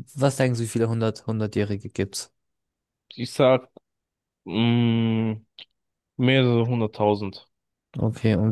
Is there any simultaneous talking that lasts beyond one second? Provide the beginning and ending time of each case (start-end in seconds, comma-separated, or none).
none